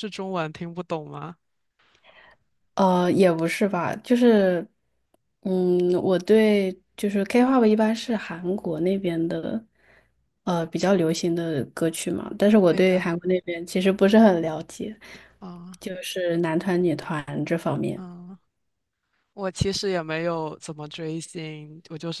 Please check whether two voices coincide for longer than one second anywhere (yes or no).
no